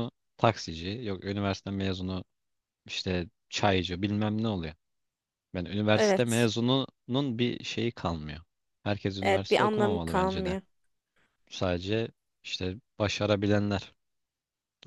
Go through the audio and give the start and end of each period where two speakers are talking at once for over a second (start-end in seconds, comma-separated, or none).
9.2-10.6